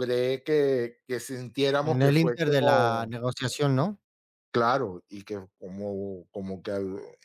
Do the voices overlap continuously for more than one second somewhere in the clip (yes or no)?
yes